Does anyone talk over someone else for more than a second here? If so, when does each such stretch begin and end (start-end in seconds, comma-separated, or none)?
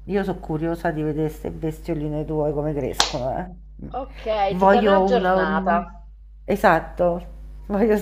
4.5-5.8